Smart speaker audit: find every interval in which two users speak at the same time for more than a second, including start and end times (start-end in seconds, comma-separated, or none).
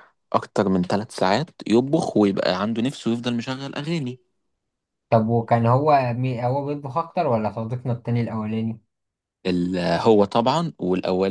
none